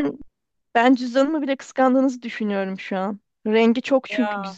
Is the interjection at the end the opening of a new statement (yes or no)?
no